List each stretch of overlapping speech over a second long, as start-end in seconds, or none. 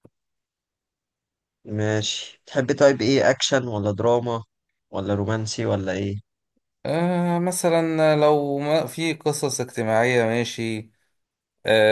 none